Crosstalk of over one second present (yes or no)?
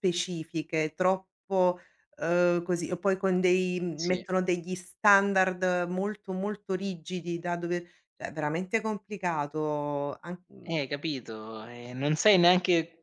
no